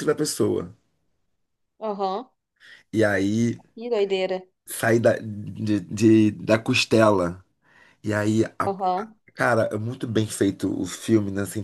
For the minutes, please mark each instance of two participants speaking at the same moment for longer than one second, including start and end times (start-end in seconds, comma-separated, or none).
none